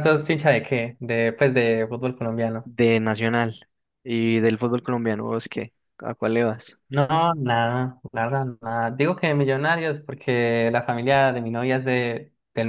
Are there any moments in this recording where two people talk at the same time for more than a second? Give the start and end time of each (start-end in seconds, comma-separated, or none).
none